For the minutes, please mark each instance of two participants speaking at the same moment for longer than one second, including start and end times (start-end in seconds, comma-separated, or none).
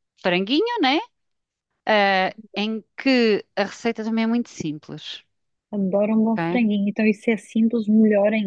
none